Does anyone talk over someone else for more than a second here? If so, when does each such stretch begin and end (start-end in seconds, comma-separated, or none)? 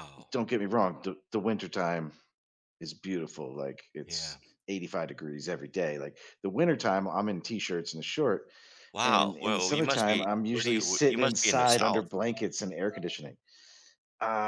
9.1-12.0